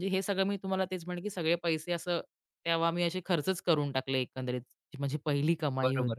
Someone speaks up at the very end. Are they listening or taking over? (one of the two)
taking over